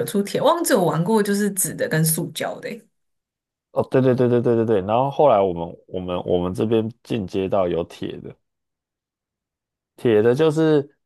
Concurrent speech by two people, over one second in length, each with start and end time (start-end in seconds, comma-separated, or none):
none